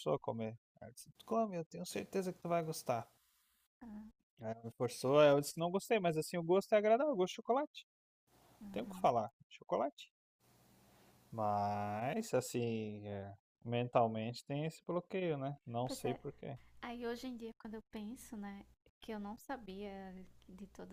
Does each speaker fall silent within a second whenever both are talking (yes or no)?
yes